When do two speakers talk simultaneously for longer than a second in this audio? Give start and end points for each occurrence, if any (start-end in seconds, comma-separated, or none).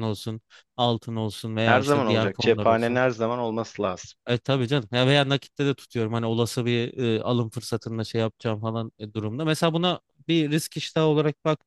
1.6-3.0